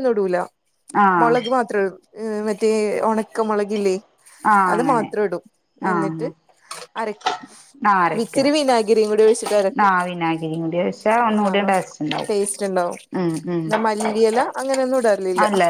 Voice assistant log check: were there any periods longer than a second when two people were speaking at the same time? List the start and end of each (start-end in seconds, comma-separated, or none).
none